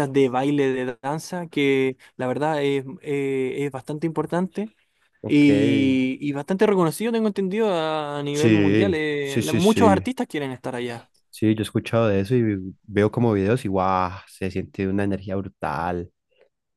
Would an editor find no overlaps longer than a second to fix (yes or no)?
no